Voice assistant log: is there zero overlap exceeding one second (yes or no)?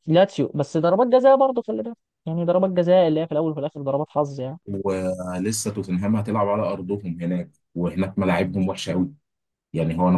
yes